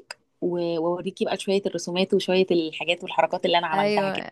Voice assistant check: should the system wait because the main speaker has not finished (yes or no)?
no